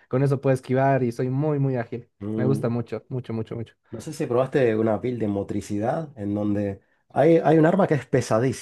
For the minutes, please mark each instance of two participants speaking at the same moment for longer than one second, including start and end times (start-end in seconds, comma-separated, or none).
none